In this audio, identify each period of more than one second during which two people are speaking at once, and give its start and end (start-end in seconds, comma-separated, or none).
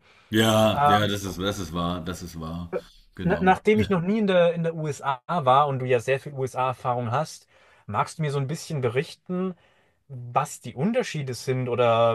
none